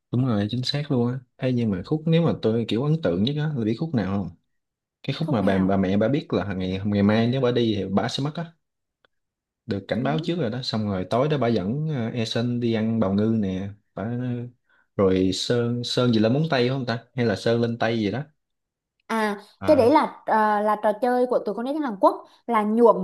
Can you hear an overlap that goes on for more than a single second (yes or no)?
no